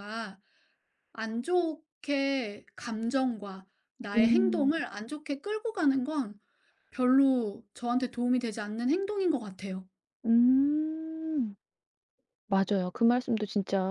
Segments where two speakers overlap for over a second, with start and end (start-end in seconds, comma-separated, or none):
none